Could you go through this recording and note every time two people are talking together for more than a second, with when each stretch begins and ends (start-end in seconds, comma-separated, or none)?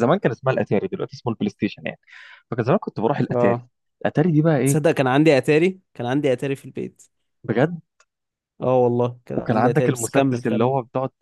9.3-10.7